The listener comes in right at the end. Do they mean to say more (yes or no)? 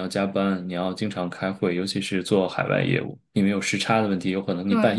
no